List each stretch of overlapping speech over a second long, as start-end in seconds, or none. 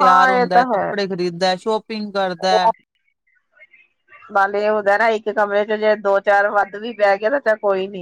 none